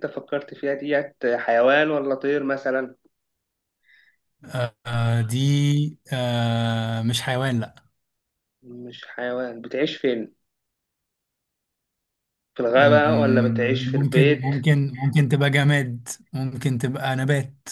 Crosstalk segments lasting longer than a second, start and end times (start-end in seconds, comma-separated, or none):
12.8-14.4